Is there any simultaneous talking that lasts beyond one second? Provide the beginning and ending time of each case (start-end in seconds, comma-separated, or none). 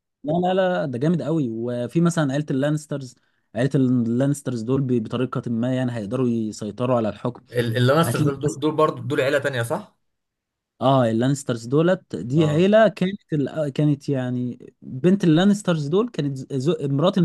none